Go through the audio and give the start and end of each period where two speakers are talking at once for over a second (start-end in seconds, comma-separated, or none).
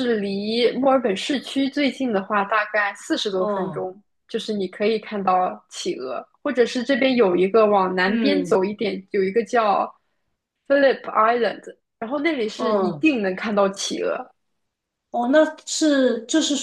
none